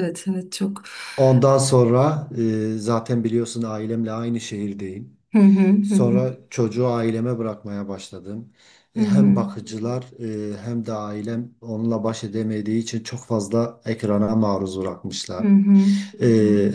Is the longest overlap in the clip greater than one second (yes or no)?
no